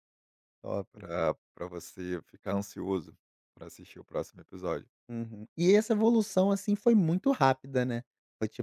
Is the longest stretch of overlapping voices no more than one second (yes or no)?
yes